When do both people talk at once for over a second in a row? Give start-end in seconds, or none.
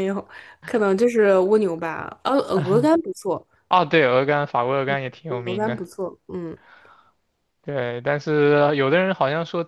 none